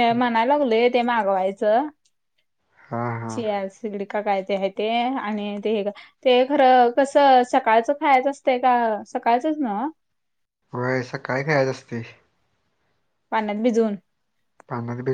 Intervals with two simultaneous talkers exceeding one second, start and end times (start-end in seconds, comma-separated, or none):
none